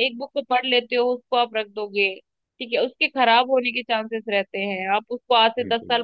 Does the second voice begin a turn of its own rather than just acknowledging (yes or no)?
no